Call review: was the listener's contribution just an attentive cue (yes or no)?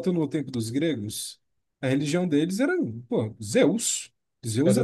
yes